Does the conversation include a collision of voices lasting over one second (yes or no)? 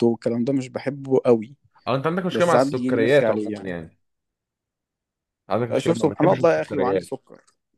yes